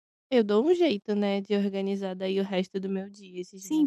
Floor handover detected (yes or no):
yes